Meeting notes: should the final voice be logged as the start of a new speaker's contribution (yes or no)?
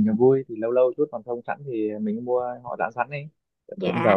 yes